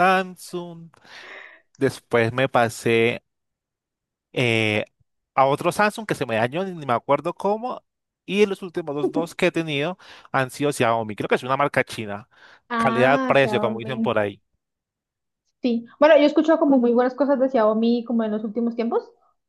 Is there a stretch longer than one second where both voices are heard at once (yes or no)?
yes